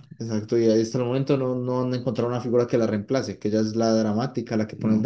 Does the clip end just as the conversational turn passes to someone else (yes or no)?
yes